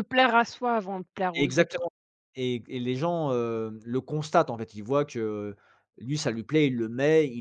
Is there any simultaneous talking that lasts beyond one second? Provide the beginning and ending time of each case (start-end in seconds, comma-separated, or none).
none